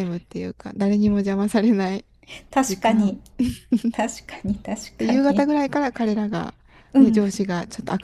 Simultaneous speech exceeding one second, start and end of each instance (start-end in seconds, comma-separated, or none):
none